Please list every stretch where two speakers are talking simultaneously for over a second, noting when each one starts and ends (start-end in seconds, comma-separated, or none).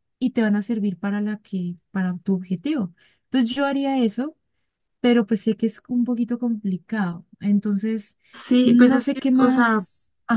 8.6-9.8